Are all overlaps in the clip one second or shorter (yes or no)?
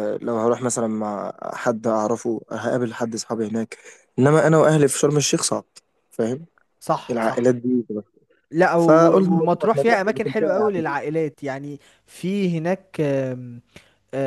no